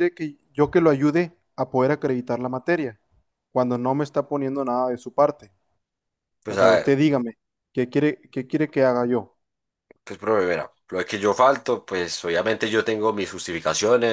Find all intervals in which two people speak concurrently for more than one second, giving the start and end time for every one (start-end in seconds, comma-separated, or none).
none